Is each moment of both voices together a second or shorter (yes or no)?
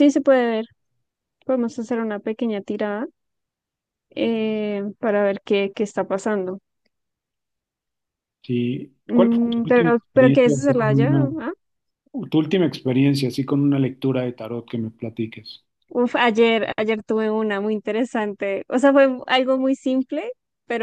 no